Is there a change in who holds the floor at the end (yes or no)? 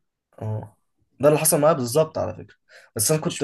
no